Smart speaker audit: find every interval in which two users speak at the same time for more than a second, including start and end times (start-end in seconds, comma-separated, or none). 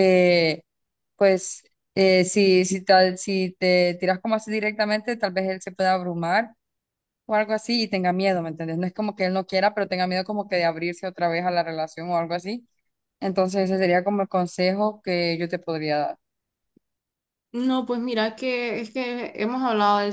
none